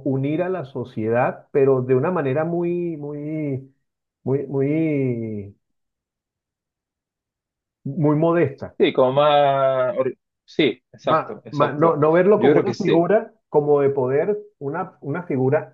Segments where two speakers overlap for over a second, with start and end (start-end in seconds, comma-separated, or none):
11.0-13.0